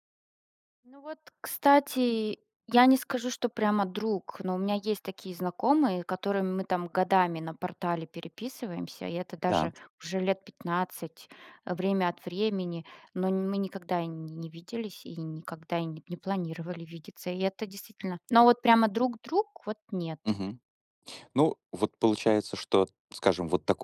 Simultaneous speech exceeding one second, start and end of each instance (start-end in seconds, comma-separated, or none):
none